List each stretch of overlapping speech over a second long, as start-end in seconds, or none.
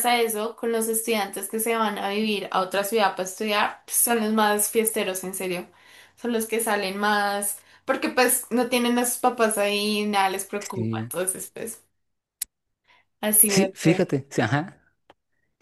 none